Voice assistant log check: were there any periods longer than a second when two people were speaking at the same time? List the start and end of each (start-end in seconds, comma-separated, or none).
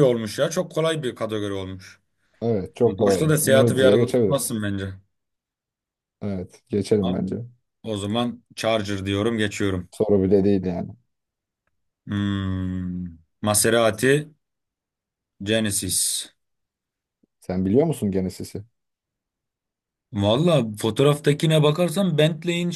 3.0-4.6